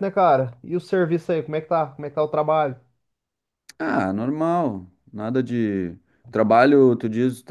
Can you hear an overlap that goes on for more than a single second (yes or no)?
no